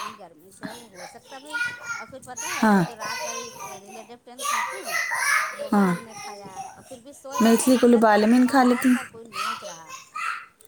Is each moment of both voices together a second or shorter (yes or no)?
no